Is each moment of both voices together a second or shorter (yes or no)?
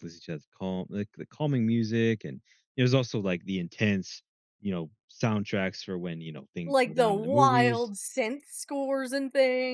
no